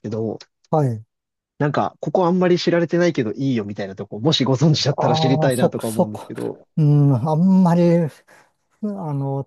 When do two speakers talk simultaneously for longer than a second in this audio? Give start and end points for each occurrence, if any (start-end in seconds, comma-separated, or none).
5.0-6.3